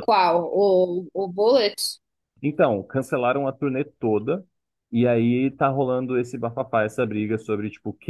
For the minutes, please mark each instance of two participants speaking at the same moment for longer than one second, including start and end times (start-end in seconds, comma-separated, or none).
none